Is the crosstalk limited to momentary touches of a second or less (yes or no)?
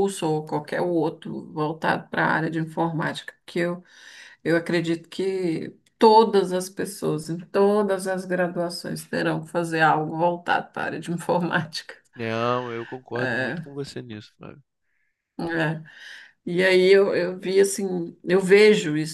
yes